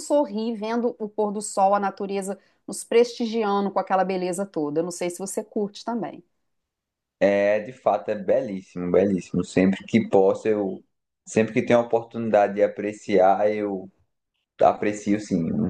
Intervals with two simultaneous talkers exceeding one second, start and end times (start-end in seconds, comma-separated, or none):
none